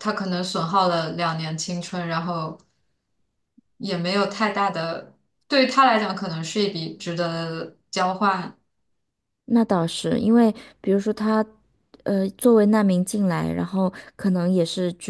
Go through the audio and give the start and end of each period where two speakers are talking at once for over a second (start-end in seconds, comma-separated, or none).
none